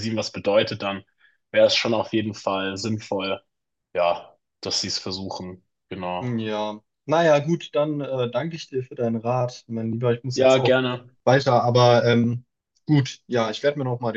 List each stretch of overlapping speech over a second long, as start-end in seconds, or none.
none